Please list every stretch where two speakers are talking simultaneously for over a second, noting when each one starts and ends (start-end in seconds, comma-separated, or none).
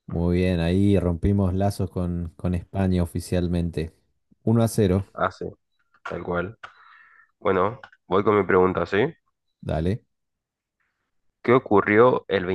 none